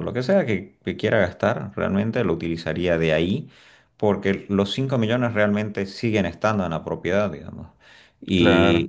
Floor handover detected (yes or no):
no